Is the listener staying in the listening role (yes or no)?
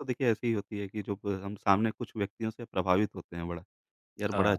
yes